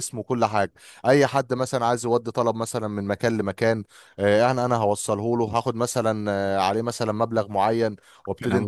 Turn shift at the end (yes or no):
no